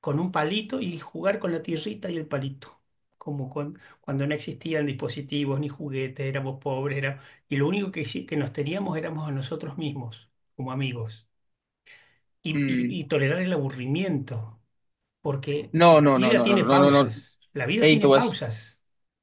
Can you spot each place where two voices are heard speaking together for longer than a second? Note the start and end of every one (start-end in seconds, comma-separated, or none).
15.7-17.1